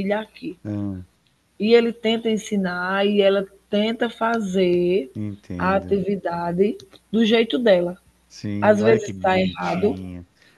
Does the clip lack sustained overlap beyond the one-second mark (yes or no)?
no